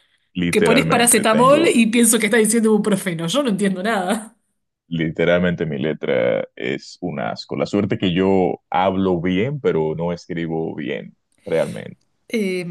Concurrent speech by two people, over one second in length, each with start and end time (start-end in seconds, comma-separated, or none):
0.5-1.8